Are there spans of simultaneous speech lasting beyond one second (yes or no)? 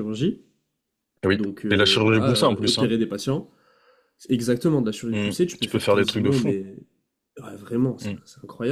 yes